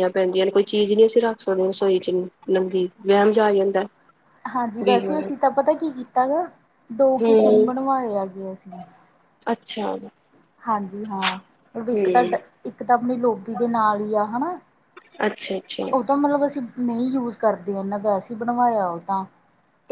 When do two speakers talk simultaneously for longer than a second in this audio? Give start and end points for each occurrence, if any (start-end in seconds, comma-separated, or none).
none